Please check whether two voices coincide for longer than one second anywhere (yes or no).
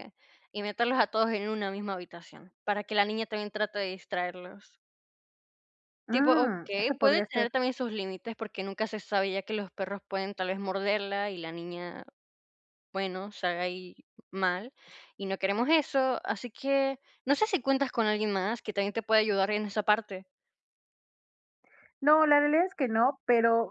yes